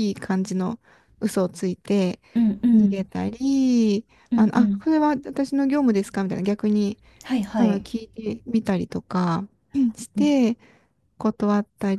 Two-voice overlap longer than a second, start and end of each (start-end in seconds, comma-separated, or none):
none